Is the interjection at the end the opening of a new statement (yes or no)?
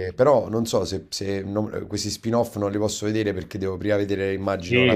yes